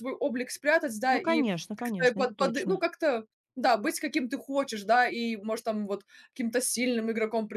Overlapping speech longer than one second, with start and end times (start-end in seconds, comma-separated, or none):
1.1-2.8